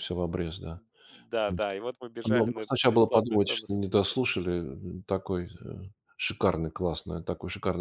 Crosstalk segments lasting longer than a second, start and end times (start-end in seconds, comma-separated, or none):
2.3-3.8